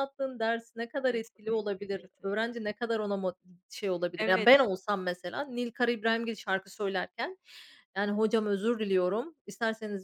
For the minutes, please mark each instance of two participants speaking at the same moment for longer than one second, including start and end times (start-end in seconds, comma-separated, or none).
1.1-2.6